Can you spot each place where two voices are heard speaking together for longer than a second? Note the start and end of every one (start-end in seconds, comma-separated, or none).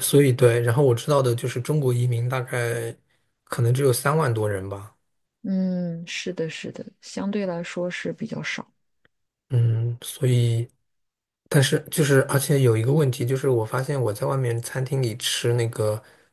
none